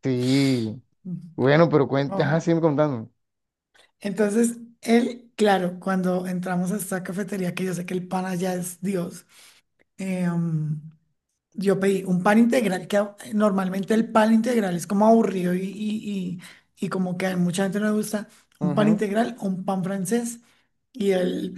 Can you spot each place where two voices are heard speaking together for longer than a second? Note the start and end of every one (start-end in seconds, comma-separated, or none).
none